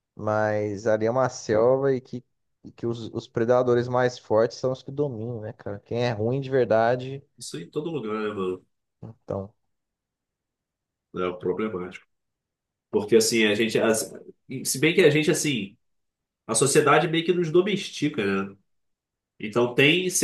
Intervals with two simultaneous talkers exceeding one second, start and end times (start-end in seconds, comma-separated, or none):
none